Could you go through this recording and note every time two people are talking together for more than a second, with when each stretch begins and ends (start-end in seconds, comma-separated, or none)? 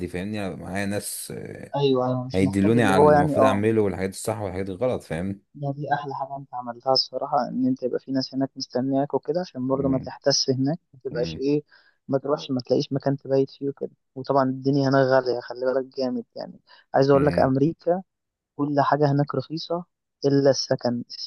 2.3-3.6